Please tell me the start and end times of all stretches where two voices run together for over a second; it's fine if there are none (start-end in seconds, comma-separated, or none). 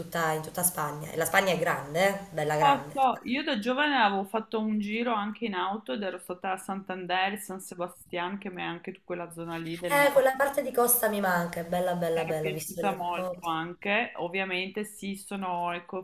12.1-13.5